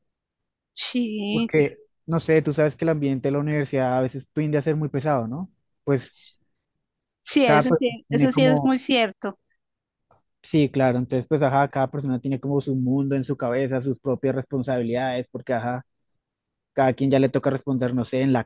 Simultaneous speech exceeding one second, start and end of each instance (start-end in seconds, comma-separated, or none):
7.4-8.8